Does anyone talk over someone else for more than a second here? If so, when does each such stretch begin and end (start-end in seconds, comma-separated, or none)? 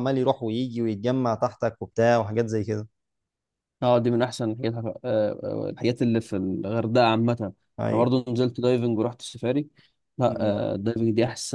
none